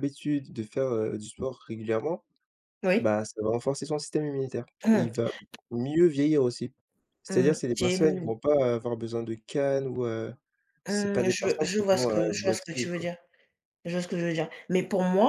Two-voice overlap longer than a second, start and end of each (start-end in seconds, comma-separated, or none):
10.9-13.1